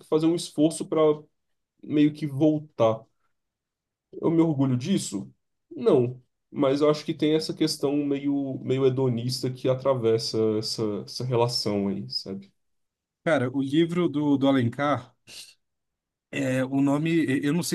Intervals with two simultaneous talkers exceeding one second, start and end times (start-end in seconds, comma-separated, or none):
none